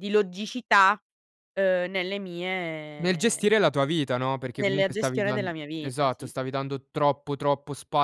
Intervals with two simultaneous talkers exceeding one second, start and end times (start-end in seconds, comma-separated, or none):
4.6-6.5